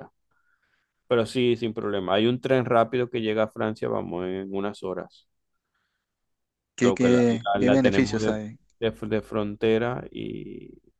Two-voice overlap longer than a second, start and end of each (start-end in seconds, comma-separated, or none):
6.8-8.3